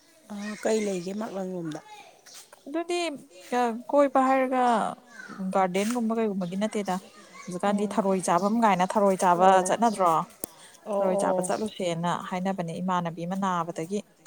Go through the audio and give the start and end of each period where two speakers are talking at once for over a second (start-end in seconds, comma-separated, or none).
none